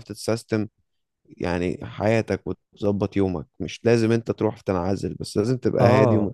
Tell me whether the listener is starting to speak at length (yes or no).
yes